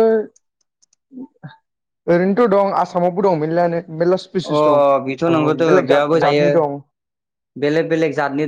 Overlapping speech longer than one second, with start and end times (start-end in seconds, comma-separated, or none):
4.3-6.5